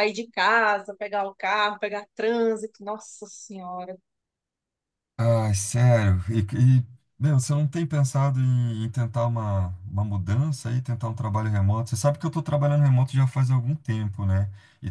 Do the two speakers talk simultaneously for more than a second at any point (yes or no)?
no